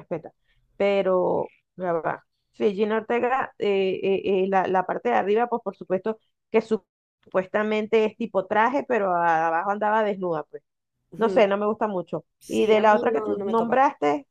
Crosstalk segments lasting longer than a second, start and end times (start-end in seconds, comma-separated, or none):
12.4-13.8